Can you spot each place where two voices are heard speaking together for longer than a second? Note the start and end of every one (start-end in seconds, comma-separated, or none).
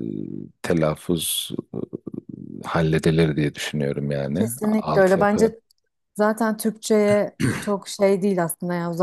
4.3-5.5